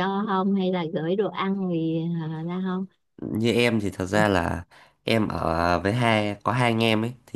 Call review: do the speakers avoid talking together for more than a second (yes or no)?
yes